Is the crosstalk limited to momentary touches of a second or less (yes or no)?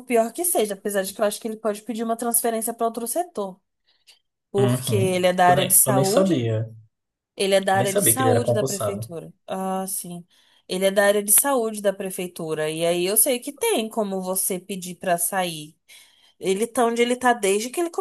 no